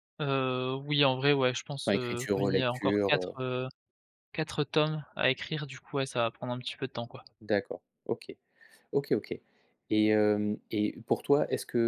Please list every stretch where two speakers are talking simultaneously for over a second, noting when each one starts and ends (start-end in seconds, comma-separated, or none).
1.9-3.4